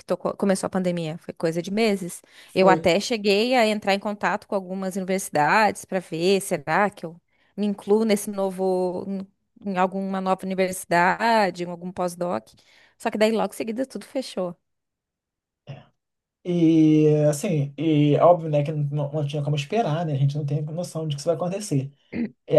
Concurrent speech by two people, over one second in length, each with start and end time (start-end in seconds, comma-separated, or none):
none